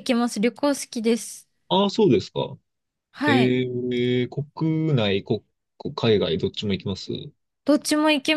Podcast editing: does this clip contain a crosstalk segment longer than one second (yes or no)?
no